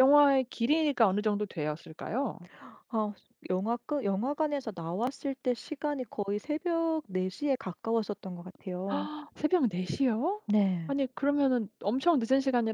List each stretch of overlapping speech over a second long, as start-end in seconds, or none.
none